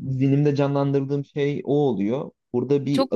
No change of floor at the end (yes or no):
no